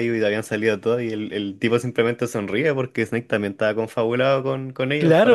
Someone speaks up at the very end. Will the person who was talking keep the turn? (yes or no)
no